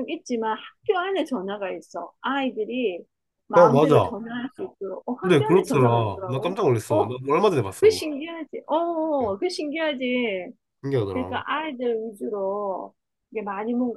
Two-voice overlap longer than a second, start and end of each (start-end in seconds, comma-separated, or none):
5.2-7.1